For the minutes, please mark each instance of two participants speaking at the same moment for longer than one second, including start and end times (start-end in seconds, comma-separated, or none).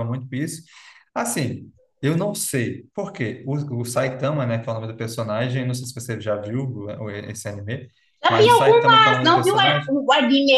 8.3-9.9